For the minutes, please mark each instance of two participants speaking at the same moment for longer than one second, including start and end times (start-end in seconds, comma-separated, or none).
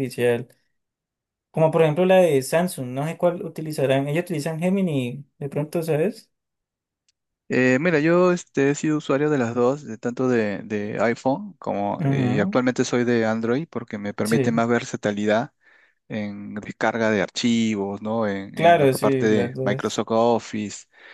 18.5-20.1